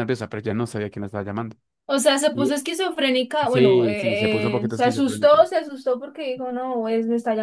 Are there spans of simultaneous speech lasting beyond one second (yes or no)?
yes